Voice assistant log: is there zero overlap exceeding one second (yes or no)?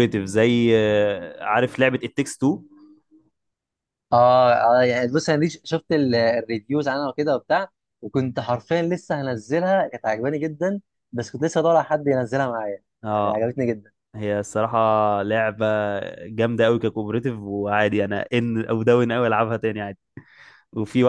yes